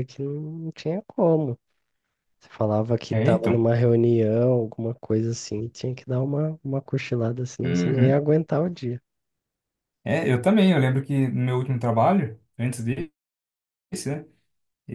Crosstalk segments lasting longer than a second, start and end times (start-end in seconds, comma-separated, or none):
none